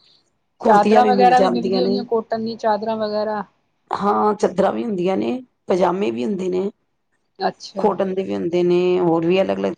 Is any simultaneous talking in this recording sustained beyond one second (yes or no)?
yes